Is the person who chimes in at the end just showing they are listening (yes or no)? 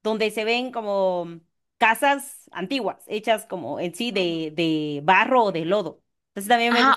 no